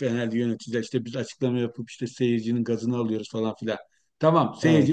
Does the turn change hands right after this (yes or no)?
no